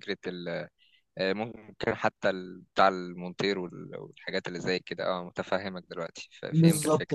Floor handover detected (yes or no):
yes